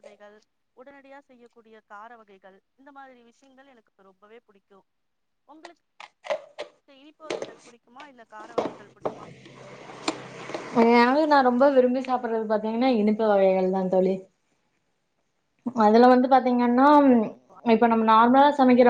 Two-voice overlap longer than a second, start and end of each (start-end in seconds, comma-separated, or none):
none